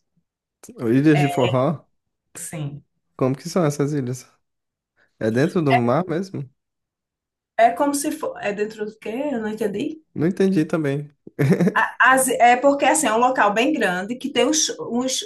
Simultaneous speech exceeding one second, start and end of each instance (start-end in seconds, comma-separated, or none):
none